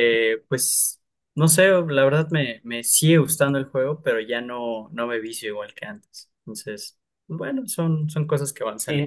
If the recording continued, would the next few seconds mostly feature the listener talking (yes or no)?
yes